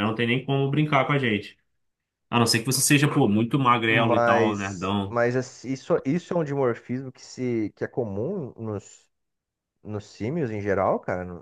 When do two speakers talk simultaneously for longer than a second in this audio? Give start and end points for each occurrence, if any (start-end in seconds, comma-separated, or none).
3.9-5.2